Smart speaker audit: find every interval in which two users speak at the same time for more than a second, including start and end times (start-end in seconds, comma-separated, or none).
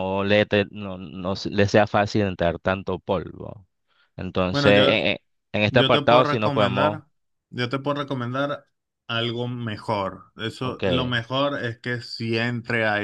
5.7-7.0